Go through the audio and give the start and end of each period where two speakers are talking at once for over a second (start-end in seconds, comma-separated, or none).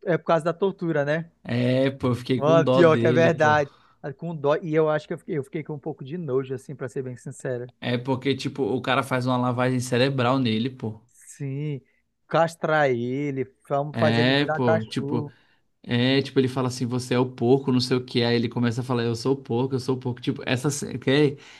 2.4-3.6, 13.9-15.3